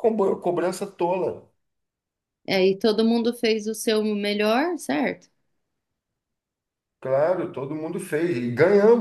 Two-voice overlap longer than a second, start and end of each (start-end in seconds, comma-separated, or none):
none